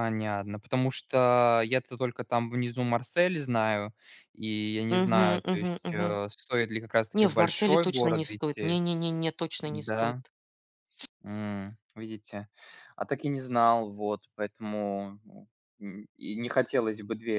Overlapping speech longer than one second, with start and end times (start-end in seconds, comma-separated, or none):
4.9-6.2, 7.1-8.8